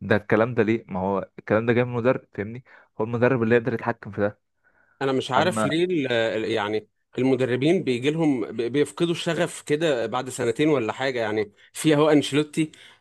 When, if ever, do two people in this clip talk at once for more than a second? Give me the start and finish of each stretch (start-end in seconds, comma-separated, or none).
none